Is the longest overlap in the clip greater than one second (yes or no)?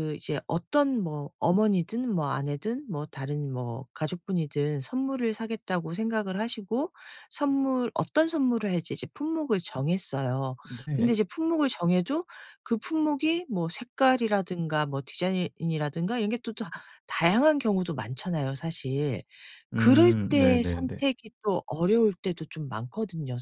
yes